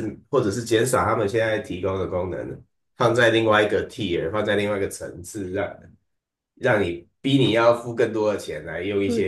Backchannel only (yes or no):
yes